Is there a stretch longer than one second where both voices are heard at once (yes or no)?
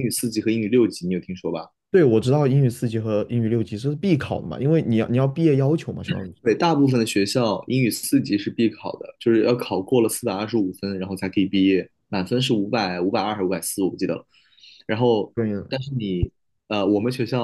no